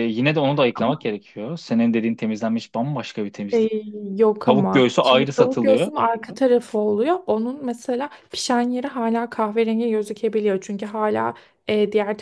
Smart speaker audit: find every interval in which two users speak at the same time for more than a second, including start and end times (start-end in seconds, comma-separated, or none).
4.5-5.9